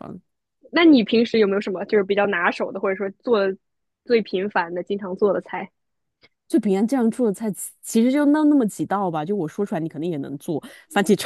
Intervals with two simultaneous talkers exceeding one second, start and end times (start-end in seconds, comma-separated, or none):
none